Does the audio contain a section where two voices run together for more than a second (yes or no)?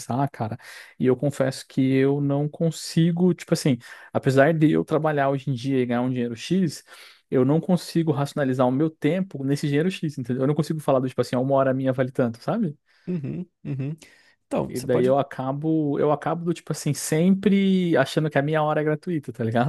no